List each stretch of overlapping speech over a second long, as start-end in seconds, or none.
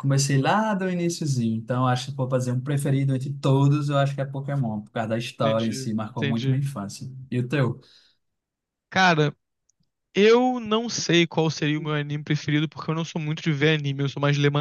5.4-6.6